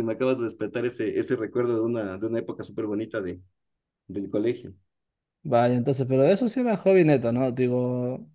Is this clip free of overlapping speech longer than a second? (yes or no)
yes